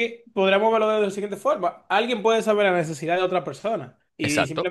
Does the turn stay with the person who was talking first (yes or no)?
yes